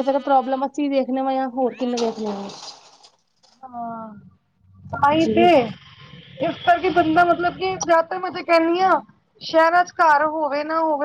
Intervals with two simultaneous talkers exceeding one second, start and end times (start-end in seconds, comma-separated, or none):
none